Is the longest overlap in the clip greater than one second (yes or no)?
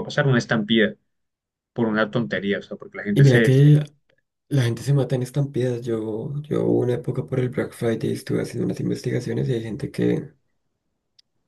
no